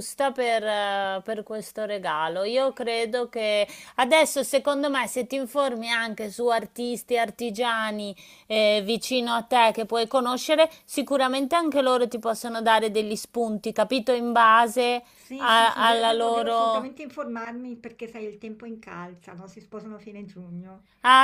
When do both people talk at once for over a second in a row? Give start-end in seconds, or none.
15.2-16.9